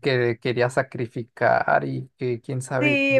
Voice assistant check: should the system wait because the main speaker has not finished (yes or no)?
no